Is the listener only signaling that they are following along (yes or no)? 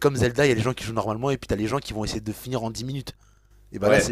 yes